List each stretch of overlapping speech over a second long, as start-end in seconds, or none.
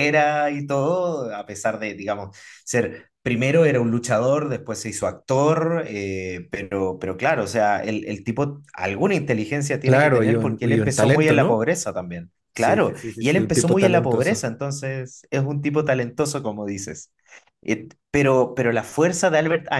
9.8-11.6, 12.5-14.4